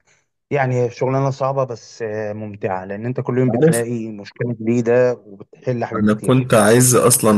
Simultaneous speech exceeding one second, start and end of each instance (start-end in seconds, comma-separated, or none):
none